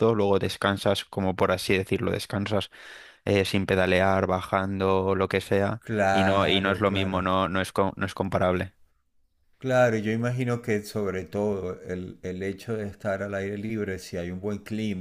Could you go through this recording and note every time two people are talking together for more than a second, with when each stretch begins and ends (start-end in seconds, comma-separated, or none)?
5.8-7.2